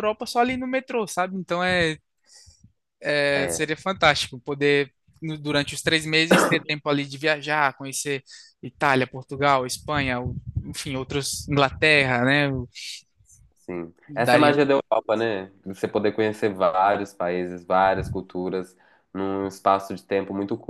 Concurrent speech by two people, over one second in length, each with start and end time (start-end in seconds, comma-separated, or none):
none